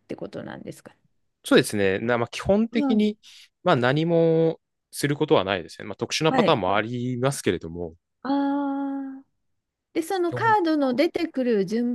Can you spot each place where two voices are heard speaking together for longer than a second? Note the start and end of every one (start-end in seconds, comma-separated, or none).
none